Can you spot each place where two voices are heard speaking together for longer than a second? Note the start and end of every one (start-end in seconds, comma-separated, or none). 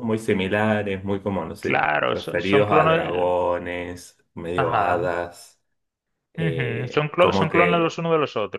1.6-3.4, 6.4-7.9